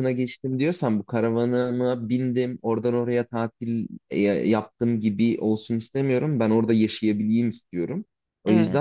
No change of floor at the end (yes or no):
yes